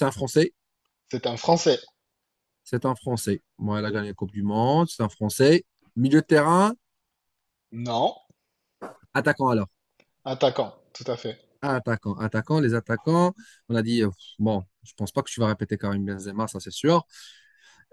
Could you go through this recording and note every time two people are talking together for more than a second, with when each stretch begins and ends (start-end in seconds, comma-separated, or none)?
none